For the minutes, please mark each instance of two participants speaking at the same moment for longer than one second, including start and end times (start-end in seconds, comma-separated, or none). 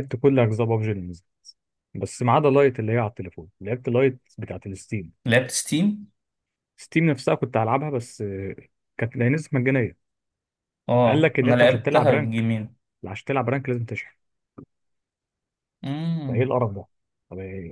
11.1-12.5